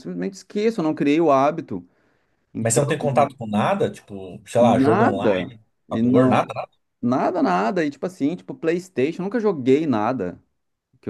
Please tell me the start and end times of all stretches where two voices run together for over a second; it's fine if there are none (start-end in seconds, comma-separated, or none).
4.6-6.5